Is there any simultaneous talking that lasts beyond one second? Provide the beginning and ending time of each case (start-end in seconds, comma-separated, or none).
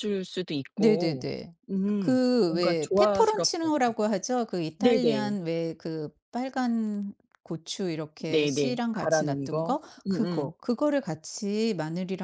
2.0-3.7, 8.3-10.5